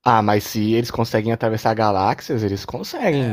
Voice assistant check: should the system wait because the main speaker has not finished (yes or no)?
no